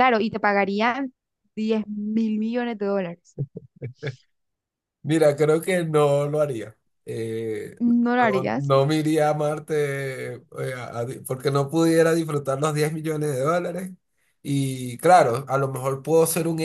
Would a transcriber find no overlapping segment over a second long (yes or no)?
yes